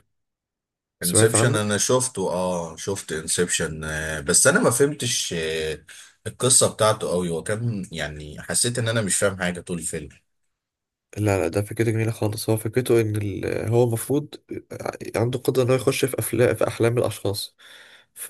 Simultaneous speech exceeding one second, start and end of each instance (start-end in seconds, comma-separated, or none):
none